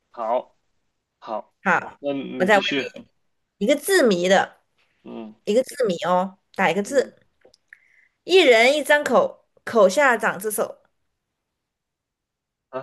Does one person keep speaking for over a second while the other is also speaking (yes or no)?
no